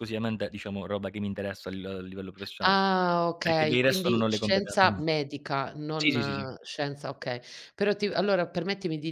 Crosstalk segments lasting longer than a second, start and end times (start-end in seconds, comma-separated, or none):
3.4-5.0